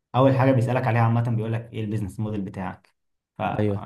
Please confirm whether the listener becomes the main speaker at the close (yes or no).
no